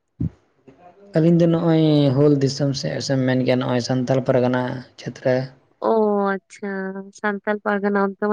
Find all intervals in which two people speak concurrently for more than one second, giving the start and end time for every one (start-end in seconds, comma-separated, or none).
none